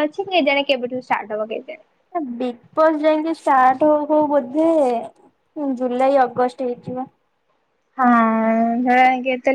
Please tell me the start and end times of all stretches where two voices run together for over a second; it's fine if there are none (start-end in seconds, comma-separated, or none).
none